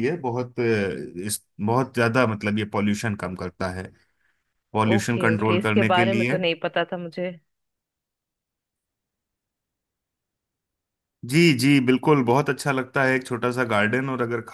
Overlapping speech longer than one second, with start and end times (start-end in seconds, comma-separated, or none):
4.9-6.4